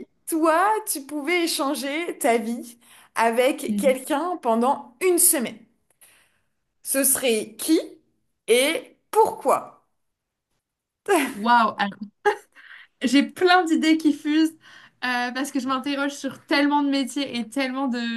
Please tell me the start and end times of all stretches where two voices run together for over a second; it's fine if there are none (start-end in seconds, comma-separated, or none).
none